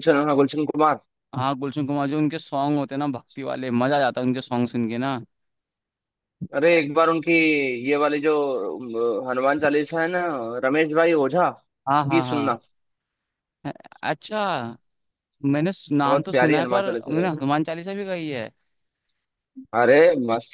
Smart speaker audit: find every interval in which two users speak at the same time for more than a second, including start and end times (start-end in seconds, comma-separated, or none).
16.1-17.3